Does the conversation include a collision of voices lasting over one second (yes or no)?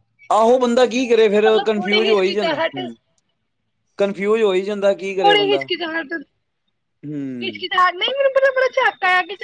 yes